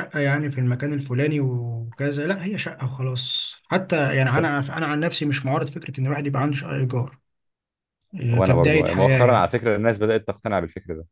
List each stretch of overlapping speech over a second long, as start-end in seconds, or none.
8.3-9.5